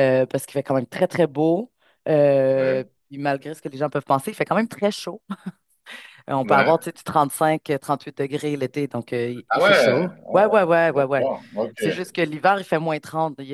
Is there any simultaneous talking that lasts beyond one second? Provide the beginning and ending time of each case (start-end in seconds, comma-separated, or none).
9.5-11.3